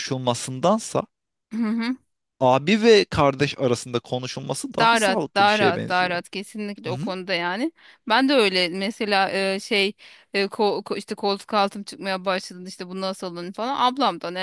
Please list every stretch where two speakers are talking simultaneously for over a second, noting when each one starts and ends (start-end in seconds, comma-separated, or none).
4.8-6.2